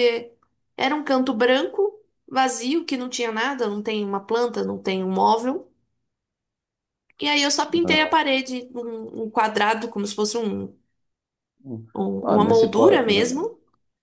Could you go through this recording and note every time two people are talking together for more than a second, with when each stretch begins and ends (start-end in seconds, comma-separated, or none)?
12.2-13.5